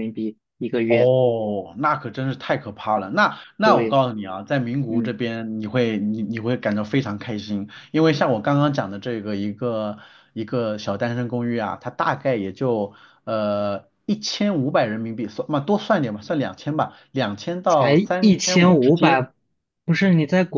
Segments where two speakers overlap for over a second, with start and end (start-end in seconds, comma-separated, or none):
17.7-19.2